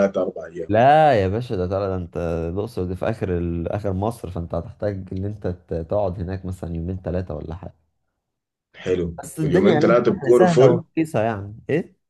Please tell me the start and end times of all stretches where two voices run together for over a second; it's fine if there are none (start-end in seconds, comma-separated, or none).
9.2-10.8